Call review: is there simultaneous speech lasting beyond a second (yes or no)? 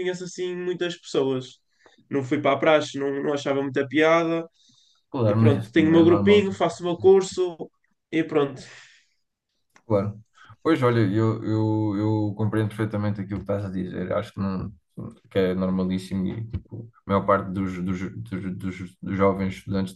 yes